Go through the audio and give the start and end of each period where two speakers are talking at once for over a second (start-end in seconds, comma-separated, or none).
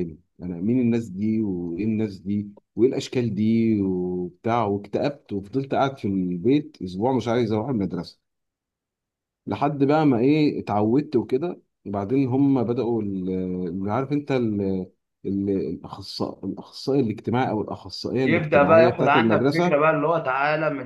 18.2-19.8